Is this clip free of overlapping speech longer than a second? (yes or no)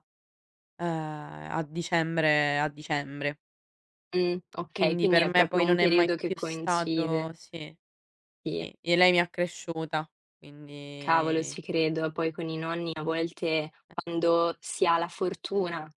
no